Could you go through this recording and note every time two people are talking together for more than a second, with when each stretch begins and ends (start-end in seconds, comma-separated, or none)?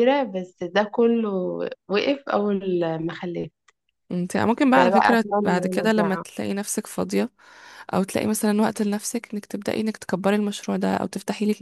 4.8-6.2